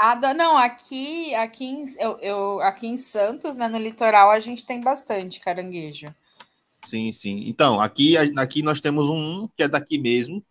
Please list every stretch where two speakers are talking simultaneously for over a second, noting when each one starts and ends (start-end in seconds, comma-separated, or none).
none